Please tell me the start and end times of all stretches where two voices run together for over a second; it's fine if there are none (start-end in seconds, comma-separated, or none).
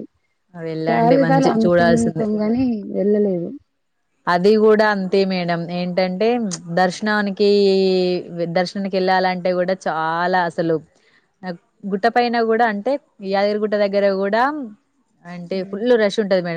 0.9-2.2